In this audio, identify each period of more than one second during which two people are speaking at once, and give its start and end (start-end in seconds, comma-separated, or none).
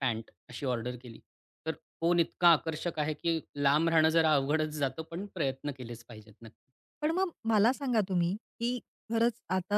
none